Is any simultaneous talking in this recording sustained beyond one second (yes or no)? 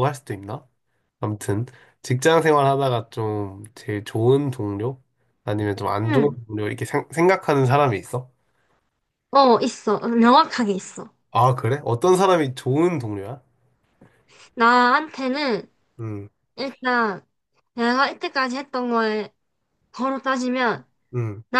no